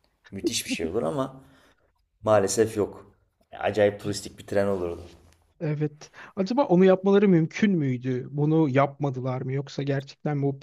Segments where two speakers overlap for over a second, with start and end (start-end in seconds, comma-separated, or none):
none